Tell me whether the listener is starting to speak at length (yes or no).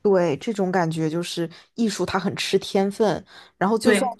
no